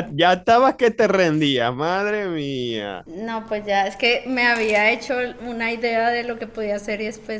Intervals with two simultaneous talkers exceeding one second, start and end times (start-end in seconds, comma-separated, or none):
none